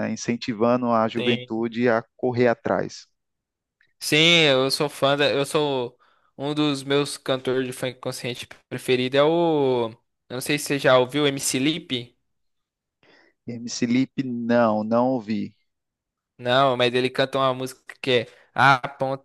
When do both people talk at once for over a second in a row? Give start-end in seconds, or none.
none